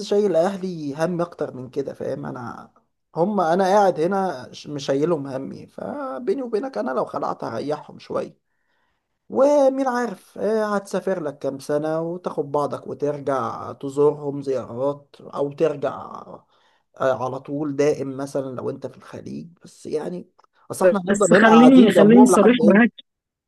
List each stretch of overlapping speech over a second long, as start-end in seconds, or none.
21.1-22.9